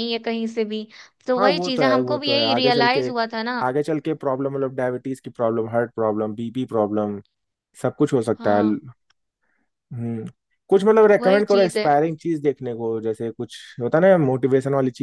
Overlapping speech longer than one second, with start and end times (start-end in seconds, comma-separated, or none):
1.4-3.1